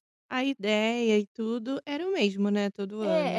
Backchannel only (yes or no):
no